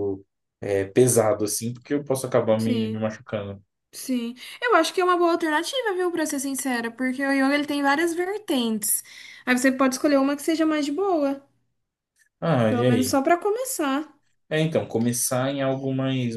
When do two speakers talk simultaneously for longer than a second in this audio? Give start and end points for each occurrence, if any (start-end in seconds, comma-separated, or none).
none